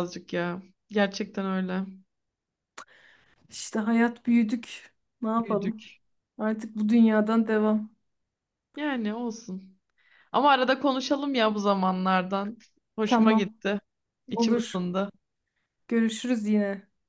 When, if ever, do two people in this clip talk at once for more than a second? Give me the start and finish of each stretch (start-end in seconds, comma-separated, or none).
none